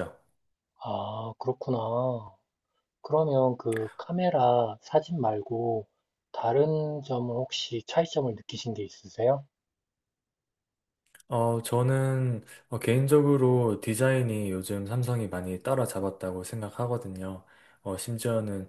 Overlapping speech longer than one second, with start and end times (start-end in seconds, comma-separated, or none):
none